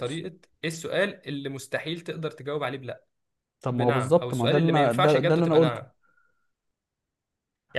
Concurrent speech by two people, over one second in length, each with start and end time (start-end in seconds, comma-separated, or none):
3.7-5.8